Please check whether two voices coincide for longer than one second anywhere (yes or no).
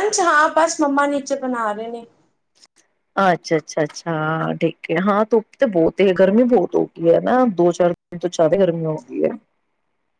no